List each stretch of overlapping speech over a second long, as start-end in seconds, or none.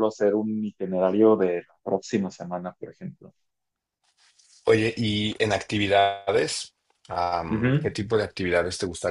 none